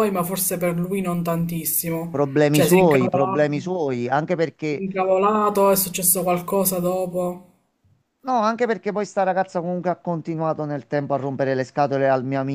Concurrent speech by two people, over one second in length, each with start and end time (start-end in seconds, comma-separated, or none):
2.1-3.5